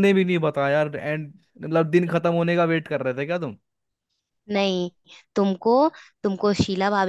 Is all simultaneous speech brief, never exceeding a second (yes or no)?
yes